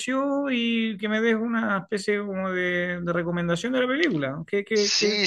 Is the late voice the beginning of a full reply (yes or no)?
yes